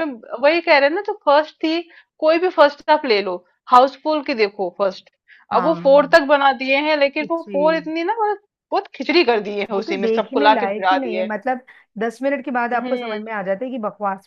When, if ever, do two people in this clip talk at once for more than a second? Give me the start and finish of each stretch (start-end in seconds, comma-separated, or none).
9.7-11.3